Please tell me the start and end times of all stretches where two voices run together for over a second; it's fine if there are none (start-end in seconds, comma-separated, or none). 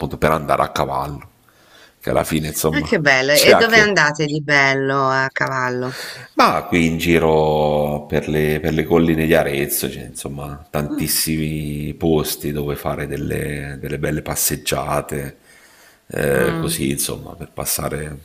2.7-4.1